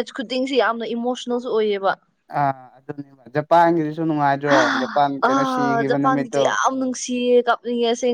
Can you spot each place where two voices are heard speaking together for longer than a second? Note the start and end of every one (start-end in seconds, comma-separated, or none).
4.5-6.4